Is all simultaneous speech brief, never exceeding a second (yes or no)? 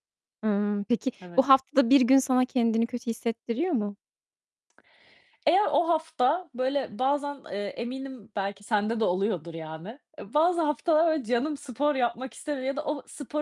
yes